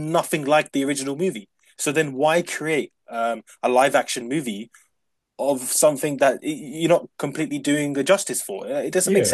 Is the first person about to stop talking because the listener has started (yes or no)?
yes